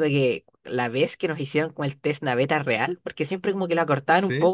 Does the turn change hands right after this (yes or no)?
no